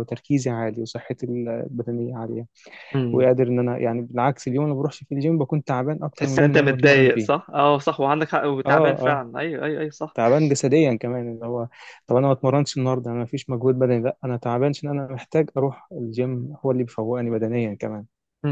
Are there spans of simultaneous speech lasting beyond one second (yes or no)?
yes